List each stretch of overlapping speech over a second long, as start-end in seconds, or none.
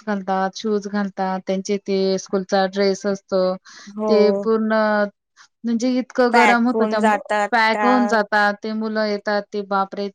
6.3-7.9